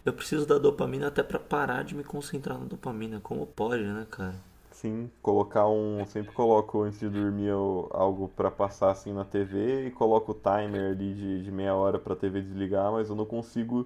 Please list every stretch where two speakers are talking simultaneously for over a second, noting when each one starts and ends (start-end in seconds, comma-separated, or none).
none